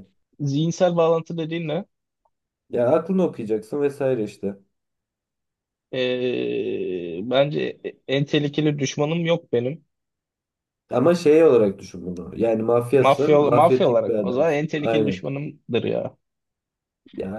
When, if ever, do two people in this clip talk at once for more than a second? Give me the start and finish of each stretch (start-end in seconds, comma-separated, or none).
13.0-15.2